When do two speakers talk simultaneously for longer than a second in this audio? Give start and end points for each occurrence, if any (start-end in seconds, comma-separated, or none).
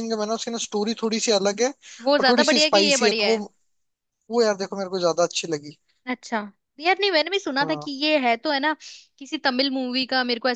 2.0-3.4